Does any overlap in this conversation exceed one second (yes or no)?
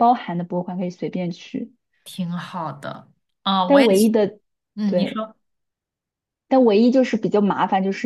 no